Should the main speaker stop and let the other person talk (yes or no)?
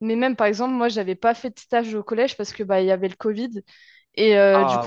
no